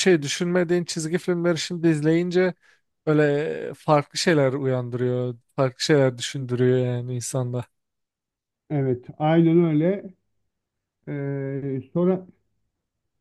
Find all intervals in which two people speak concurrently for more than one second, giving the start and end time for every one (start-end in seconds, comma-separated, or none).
none